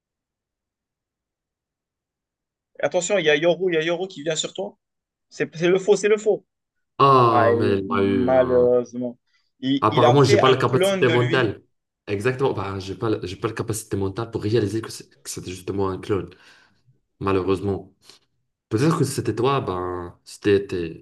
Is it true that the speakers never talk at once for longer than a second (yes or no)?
no